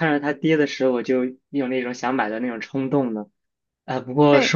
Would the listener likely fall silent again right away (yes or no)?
yes